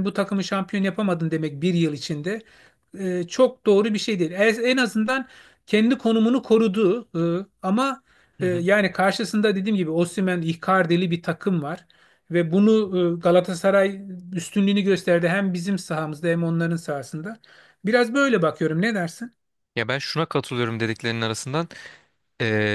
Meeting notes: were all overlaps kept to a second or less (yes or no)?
yes